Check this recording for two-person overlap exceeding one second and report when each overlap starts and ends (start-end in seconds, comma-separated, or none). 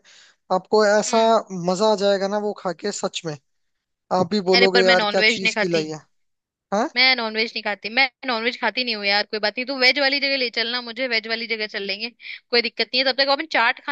4.5-5.9